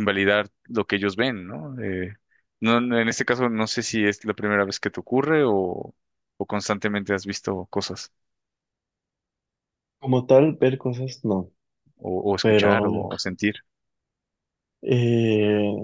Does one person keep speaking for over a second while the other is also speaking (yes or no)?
no